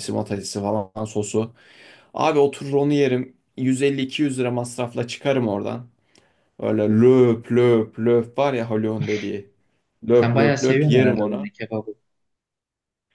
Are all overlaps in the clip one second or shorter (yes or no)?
no